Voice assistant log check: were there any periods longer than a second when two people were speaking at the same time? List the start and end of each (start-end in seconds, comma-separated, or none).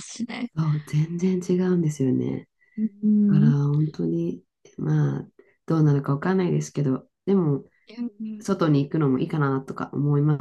none